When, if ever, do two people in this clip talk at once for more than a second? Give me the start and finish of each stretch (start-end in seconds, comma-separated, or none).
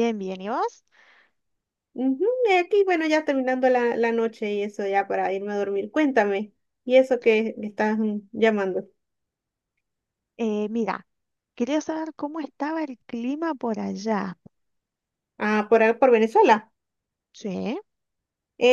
none